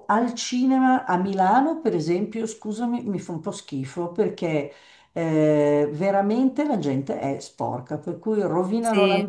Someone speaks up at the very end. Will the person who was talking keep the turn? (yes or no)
yes